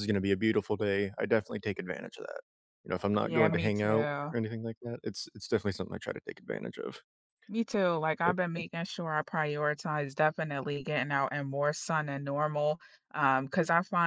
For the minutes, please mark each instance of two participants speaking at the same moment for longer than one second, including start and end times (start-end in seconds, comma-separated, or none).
3.1-4.3